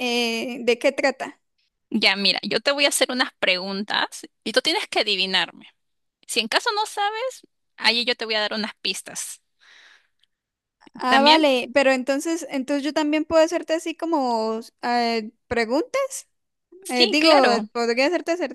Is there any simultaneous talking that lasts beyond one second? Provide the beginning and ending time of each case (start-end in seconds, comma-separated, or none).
none